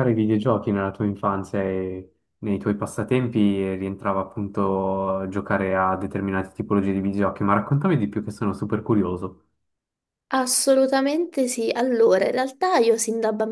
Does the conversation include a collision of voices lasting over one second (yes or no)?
no